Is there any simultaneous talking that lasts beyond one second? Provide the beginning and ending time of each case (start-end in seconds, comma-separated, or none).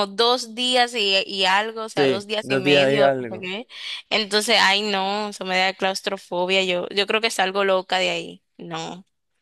2.0-3.5